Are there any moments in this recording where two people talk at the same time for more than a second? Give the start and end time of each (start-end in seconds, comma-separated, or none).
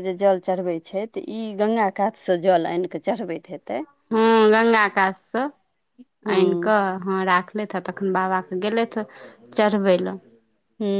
none